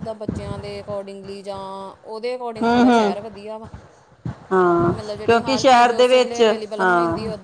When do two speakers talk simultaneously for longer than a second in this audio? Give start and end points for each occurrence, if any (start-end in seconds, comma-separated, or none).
4.8-6.4